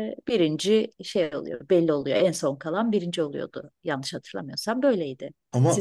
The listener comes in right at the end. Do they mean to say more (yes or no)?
yes